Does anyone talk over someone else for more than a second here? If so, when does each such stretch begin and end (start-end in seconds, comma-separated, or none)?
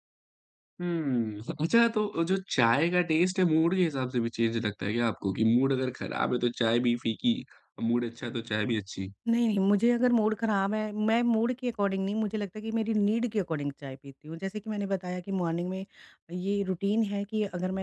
none